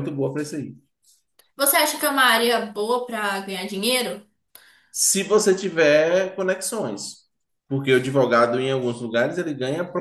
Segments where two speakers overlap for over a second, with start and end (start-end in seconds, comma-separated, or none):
none